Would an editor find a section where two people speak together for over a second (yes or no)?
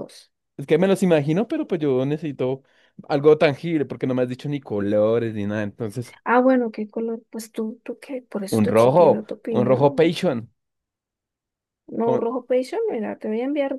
yes